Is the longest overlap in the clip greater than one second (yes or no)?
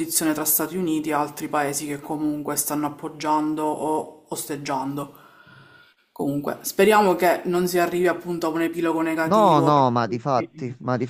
yes